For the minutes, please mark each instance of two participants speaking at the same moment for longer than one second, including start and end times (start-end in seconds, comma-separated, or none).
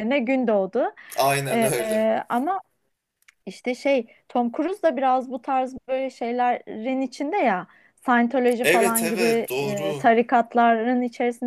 8.6-10.1